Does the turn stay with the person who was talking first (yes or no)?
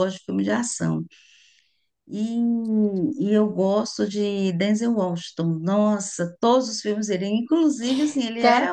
yes